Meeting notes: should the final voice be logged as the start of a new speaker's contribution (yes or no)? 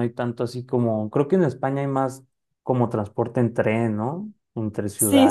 yes